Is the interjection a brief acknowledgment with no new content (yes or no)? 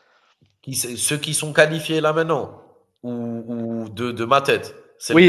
no